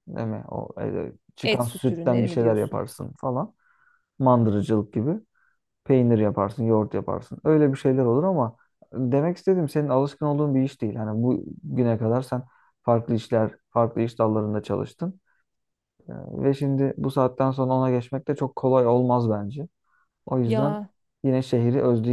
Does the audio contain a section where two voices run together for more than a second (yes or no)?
yes